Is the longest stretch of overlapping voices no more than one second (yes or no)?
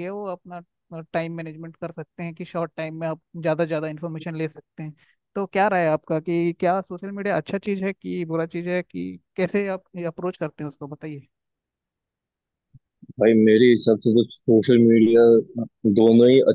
yes